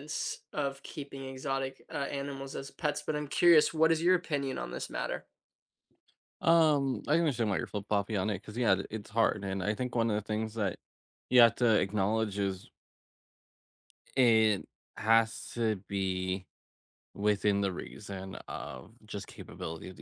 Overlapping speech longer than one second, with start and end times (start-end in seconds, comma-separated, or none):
none